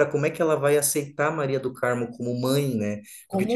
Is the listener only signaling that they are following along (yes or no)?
yes